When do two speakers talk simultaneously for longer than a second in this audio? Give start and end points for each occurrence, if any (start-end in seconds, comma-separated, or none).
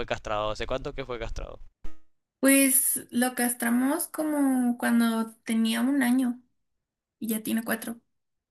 none